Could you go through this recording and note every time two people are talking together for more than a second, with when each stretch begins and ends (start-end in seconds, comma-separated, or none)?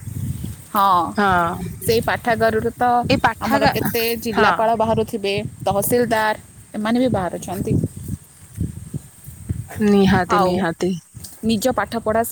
none